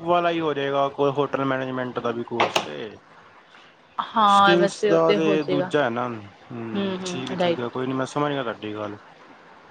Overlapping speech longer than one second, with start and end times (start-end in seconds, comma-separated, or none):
4.3-5.7